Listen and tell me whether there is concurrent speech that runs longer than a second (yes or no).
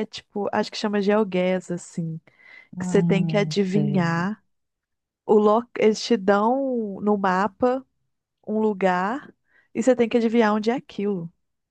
yes